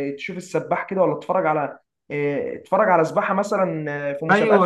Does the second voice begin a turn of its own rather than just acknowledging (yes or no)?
yes